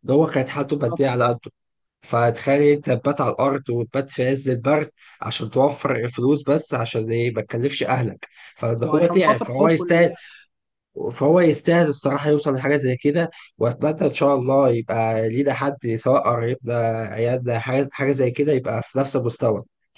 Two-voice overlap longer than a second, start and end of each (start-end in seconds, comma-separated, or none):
8.8-10.1